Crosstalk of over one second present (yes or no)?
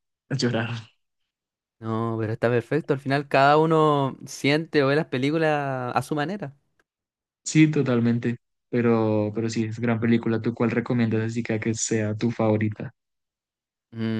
no